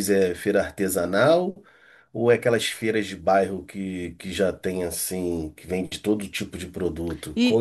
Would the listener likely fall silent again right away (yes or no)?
no